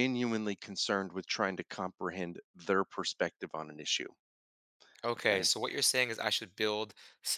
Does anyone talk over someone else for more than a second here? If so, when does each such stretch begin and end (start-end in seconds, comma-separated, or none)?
none